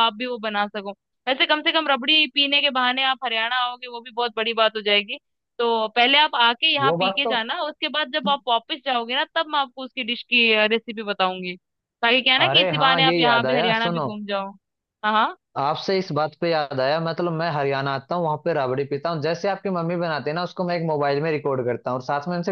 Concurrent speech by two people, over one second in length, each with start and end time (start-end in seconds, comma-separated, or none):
12.4-14.1